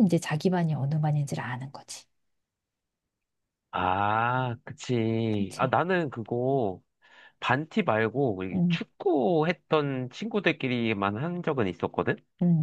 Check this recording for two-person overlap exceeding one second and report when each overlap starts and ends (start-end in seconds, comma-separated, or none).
none